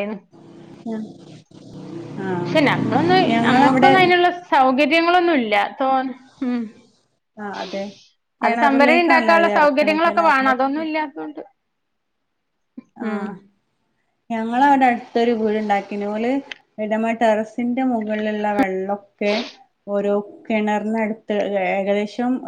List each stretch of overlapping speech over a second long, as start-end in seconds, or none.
8.4-10.5